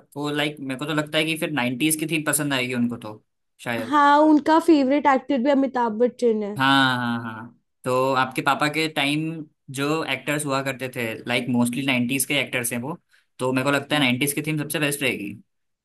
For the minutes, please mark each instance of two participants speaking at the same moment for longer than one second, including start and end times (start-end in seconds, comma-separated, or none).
none